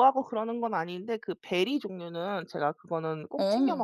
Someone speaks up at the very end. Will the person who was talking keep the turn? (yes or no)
yes